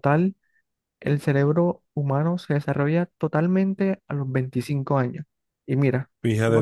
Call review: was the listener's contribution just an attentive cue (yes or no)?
yes